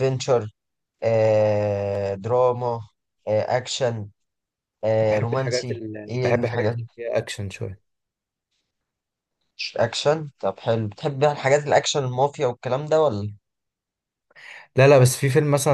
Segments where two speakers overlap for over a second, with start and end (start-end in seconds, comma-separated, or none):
5.1-6.8